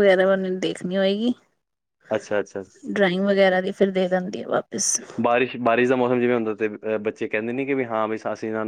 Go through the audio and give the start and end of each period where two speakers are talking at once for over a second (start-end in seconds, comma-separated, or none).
none